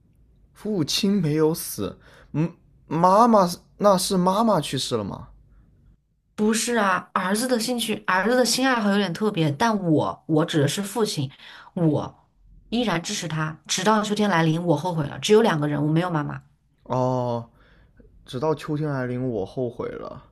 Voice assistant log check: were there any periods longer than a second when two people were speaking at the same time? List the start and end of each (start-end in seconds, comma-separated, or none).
none